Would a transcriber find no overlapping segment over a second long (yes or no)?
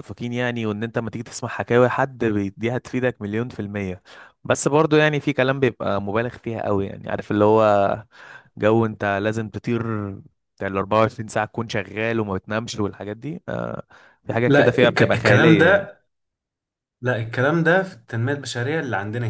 no